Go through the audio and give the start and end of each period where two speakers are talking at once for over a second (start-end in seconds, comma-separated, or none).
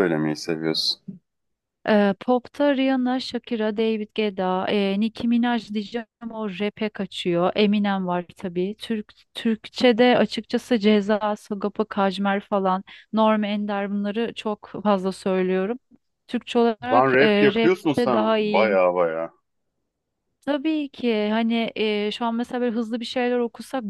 16.9-18.8